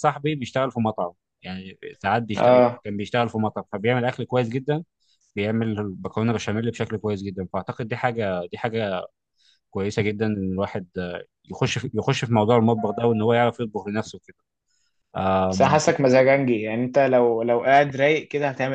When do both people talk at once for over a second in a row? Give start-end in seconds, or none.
none